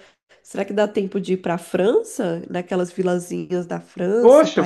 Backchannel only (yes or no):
no